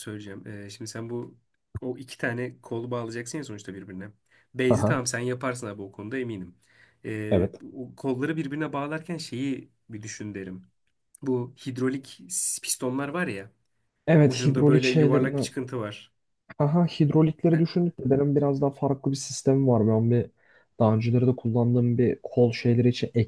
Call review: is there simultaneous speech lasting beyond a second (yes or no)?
yes